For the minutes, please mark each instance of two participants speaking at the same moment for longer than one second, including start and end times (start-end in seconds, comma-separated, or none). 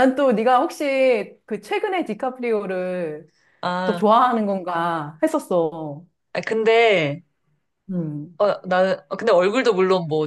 none